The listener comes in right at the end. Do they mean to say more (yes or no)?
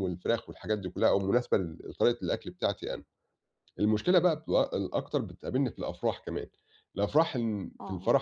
no